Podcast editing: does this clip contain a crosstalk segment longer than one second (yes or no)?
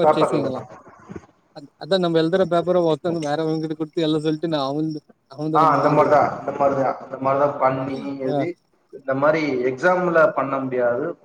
no